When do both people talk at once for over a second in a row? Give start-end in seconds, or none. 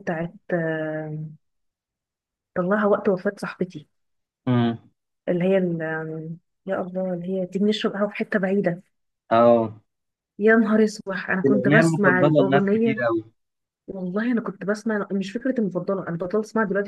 11.5-13.0